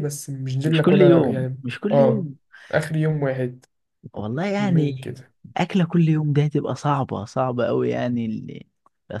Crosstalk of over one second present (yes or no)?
yes